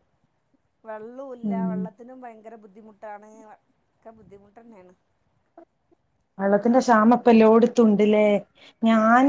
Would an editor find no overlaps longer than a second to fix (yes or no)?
yes